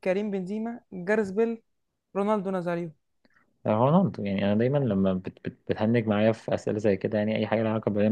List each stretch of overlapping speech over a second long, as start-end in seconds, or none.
none